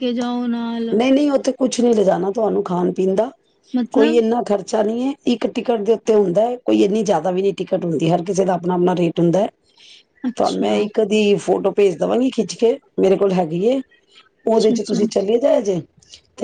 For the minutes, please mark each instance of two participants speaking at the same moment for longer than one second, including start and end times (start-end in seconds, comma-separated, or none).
none